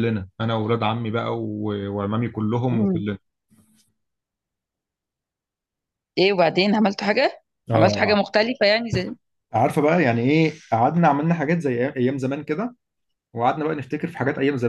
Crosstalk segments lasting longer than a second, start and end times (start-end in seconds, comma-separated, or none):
none